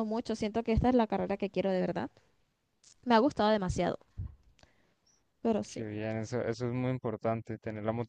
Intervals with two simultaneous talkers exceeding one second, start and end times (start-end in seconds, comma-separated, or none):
none